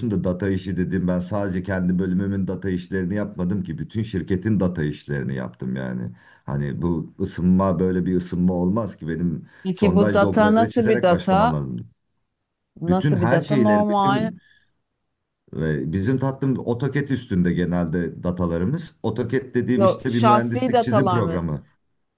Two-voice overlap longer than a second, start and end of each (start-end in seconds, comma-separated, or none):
9.6-11.5, 12.9-14.3, 19.7-21.4